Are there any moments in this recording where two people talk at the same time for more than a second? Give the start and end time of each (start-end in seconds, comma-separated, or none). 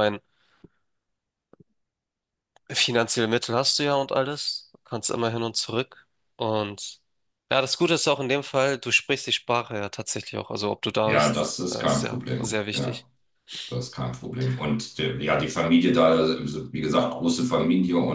11.0-13.0